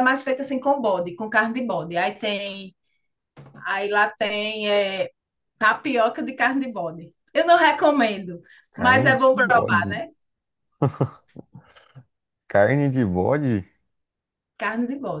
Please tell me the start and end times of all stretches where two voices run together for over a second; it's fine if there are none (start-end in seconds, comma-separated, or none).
8.8-10.1